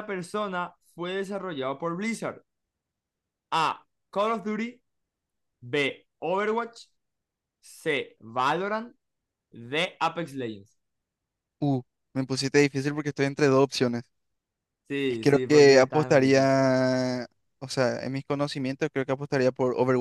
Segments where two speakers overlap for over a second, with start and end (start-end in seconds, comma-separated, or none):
15.1-16.5